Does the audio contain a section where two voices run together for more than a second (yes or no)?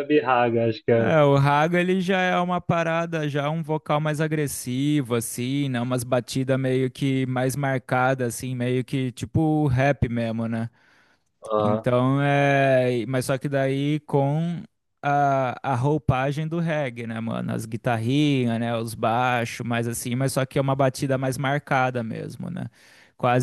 no